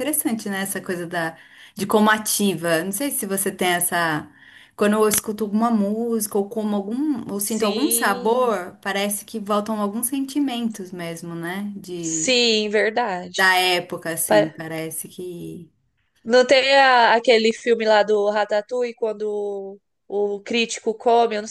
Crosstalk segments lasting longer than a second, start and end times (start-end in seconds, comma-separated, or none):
7.3-8.6